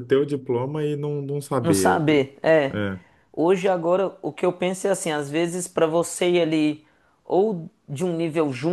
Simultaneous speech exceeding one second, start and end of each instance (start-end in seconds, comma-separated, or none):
none